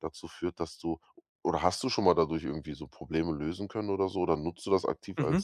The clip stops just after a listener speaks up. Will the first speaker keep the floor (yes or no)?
no